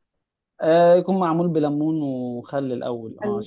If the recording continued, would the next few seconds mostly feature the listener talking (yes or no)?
yes